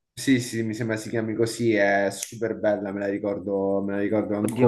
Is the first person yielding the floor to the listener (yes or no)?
yes